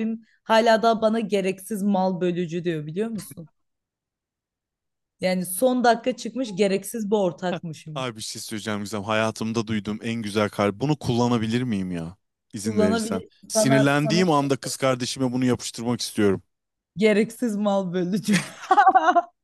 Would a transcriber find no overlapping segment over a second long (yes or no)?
no